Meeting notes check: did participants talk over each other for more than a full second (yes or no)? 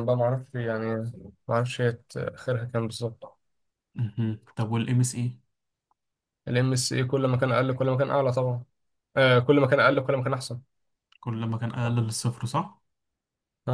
no